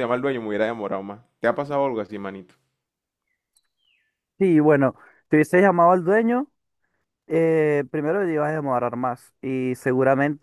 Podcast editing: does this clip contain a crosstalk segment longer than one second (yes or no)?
no